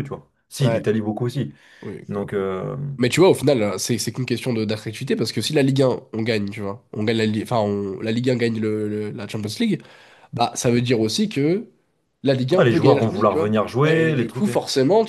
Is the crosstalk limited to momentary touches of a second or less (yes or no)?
no